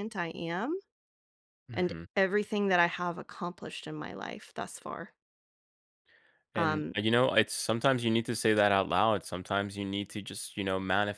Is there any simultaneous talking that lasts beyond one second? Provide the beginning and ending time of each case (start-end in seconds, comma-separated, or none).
none